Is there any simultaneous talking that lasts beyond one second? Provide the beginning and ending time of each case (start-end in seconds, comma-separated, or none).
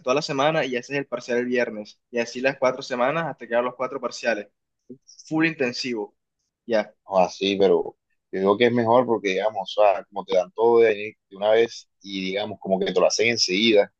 none